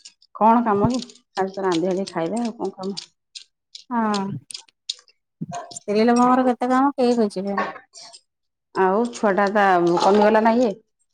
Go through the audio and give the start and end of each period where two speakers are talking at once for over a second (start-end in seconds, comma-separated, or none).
none